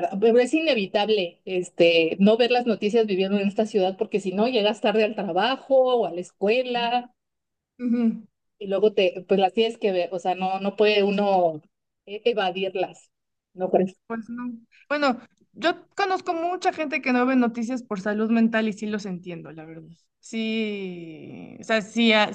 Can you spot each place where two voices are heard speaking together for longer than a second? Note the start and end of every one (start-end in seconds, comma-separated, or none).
none